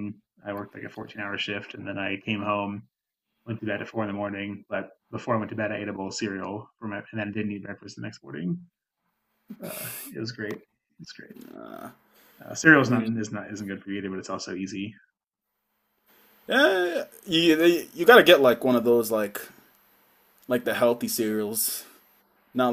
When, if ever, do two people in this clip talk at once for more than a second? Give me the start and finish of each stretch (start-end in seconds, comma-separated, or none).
none